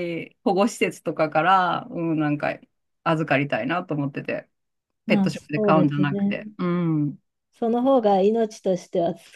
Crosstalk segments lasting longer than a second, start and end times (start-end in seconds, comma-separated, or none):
5.1-6.4